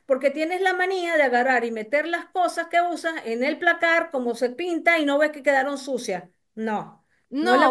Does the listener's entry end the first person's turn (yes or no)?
yes